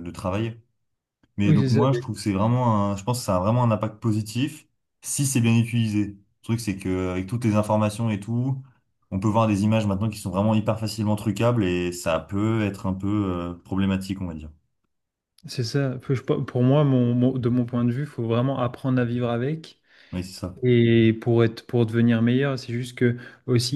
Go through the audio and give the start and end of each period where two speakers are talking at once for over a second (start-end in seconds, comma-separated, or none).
none